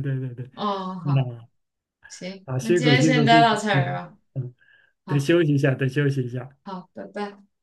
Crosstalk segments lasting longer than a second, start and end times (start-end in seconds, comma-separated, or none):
2.5-4.2